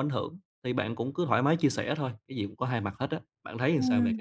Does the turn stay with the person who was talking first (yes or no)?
no